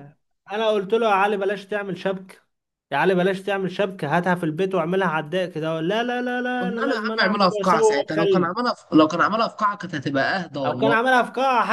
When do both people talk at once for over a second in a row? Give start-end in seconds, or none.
6.6-8.5